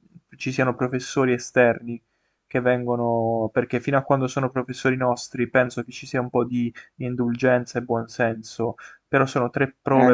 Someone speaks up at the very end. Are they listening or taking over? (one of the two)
taking over